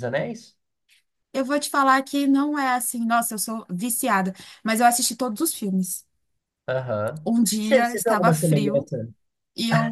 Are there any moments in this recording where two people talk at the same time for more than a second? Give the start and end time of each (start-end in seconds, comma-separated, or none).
7.2-8.9